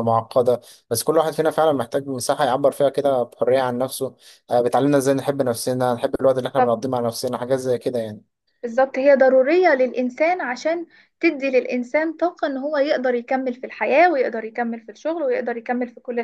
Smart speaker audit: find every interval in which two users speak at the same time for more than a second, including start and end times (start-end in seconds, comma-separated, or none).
none